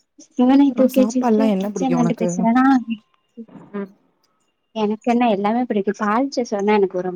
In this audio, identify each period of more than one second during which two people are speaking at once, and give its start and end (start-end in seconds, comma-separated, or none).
0.8-2.3